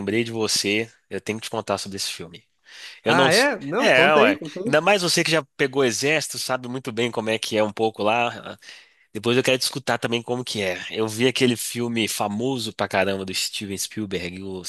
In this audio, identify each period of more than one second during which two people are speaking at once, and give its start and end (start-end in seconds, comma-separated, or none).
3.0-4.8